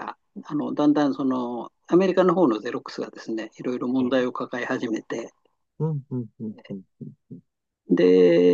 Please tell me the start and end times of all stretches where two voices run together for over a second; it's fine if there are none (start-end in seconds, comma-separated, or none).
none